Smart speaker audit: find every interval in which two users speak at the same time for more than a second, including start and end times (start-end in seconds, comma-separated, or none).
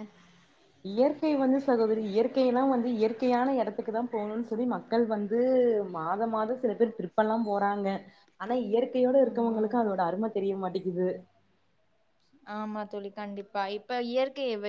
none